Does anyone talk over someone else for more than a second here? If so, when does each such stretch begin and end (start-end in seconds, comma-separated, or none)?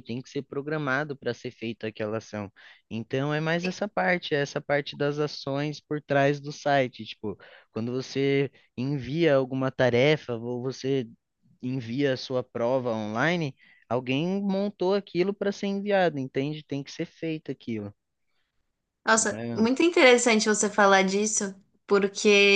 none